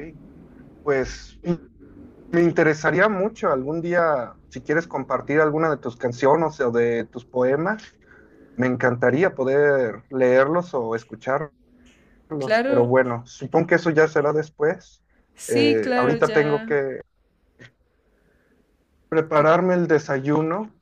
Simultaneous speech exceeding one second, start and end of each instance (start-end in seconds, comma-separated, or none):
15.5-16.7